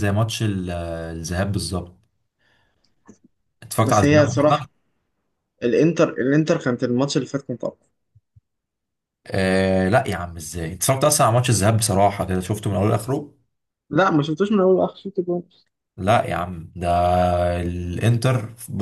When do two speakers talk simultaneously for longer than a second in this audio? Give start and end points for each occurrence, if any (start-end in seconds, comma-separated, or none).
none